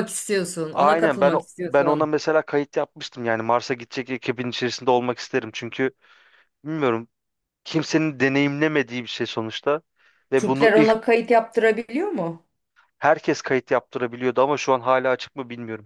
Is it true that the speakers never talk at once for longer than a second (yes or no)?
no